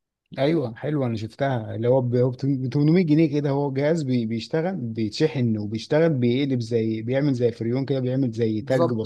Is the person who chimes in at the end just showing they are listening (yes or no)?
no